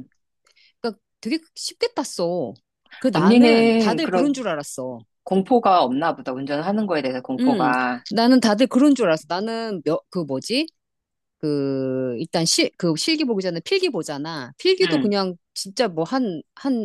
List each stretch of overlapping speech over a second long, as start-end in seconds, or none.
3.1-4.3